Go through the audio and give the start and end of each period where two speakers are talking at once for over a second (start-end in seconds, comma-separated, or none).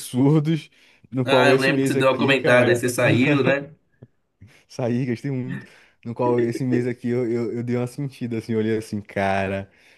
1.2-2.9